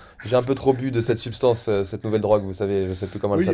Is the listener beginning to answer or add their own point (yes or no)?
yes